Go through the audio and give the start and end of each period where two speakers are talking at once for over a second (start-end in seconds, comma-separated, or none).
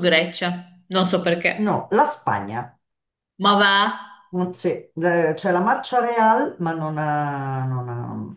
none